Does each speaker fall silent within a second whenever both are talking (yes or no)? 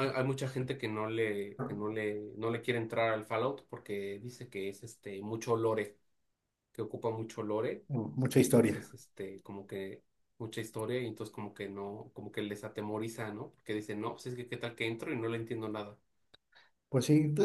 yes